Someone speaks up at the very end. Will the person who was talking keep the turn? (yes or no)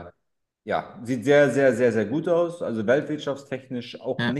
yes